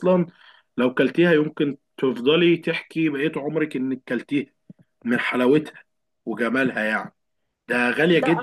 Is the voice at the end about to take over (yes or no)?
yes